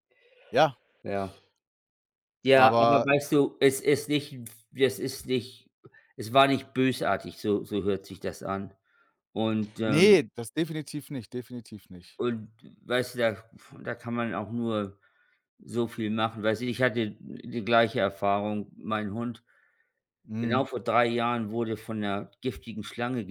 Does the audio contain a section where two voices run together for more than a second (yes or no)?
no